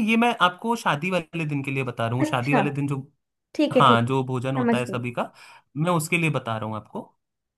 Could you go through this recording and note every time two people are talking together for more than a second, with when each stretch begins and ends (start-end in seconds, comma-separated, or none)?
3.7-5.0